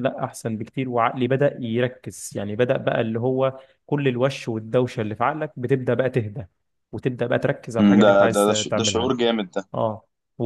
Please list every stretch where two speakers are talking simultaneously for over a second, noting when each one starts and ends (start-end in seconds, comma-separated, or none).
7.8-9.1